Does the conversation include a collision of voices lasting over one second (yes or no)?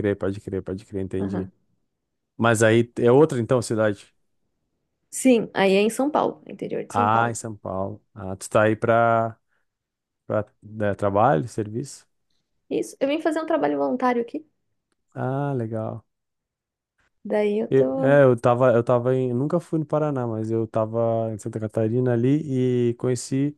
no